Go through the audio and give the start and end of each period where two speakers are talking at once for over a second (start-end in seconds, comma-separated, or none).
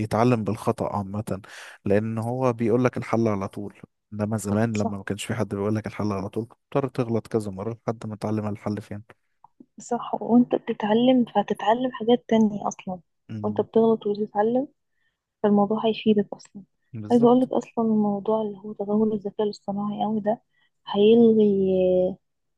none